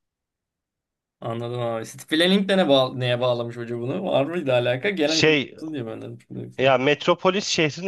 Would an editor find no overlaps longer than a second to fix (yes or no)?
yes